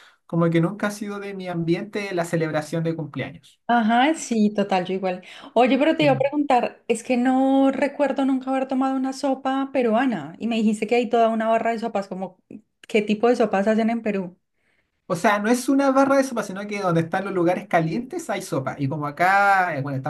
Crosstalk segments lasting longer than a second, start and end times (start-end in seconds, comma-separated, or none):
none